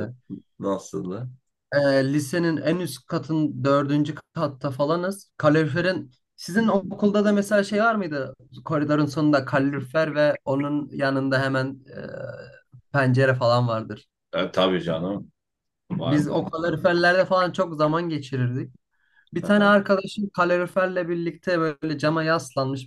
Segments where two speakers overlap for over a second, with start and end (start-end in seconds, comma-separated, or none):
none